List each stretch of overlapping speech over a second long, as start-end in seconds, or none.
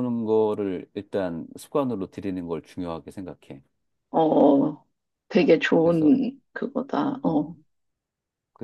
none